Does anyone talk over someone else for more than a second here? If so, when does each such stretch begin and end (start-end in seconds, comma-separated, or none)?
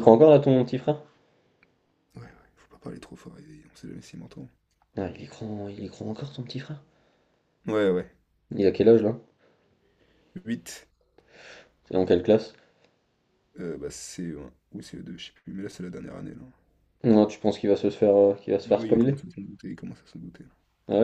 none